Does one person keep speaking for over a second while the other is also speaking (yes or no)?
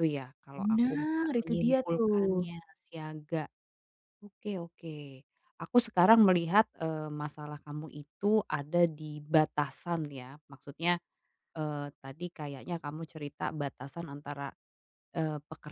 yes